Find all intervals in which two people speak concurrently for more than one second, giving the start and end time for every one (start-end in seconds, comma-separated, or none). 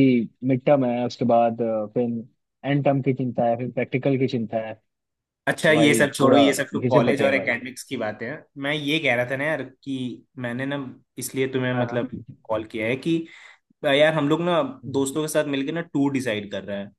5.5-7.5